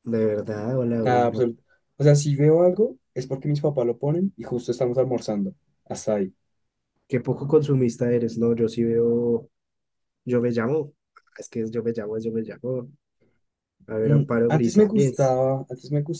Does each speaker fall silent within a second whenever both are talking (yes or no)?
no